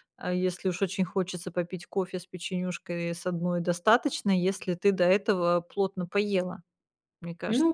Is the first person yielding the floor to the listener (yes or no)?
yes